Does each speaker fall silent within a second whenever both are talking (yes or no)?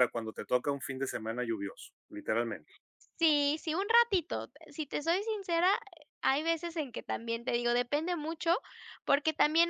yes